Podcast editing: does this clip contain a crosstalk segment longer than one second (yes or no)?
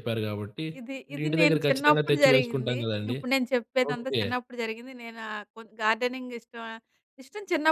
yes